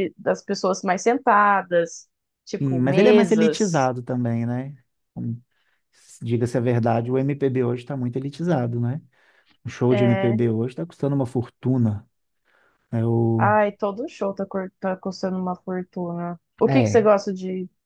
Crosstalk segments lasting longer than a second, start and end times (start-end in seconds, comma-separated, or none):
2.6-3.9